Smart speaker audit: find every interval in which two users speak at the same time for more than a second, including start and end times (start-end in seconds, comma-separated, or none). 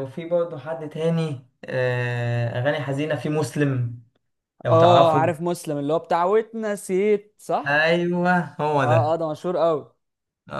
none